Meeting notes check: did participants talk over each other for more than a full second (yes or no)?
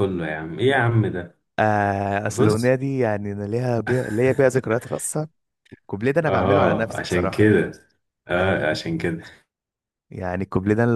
yes